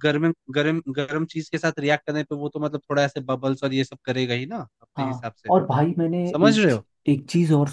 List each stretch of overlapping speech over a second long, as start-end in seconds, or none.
none